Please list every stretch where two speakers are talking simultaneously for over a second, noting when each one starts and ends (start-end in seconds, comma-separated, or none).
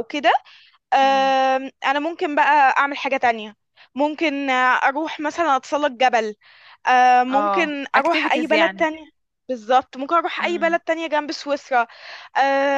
7.3-8.8